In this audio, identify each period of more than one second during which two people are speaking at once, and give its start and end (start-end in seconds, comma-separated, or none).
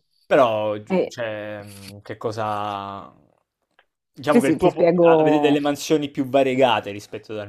4.3-5.6